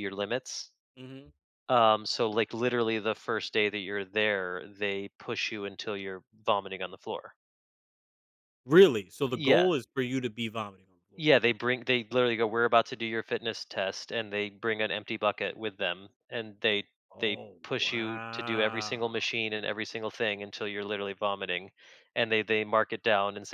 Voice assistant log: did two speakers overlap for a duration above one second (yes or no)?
yes